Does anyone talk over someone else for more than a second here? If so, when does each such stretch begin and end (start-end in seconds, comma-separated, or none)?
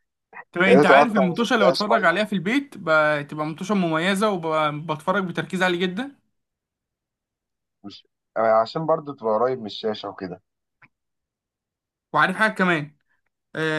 0.7-2.1